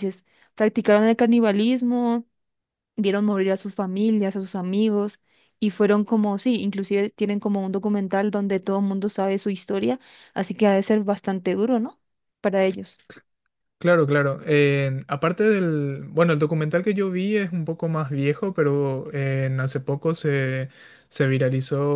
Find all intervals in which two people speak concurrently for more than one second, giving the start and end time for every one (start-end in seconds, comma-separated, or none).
none